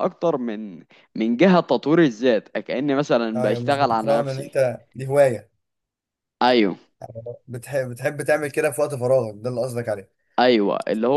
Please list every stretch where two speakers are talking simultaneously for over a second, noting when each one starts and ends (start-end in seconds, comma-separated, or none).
3.4-4.6